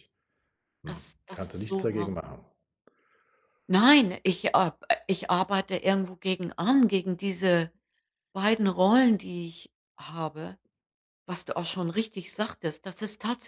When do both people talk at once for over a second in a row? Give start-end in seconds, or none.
0.9-2.2